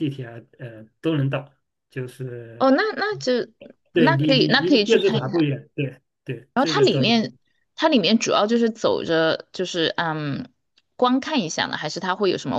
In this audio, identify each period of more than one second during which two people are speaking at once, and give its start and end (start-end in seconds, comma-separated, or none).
3.9-5.2